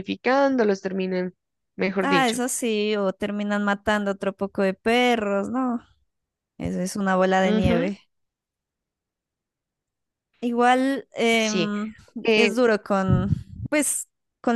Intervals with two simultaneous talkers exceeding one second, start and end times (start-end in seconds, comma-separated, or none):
none